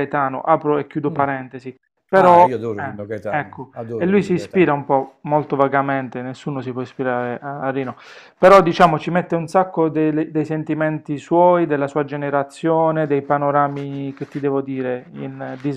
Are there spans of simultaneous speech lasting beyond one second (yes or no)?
yes